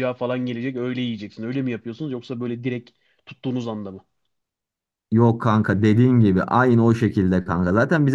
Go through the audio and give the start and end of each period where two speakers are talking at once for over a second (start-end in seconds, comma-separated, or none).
none